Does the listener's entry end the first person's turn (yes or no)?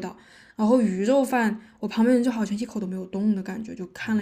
yes